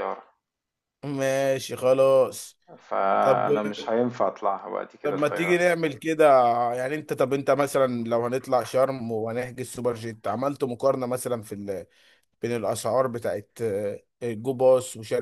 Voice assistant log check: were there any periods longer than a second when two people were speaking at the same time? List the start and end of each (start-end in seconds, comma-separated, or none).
none